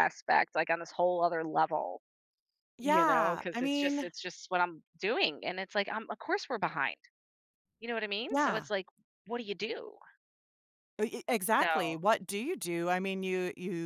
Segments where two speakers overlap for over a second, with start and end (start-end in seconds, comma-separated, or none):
2.8-4.1